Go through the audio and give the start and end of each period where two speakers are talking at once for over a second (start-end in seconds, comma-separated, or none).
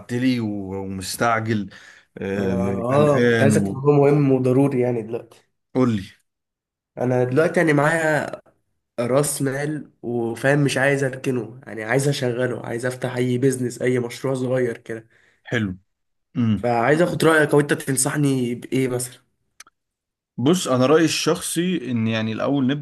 2.3-3.9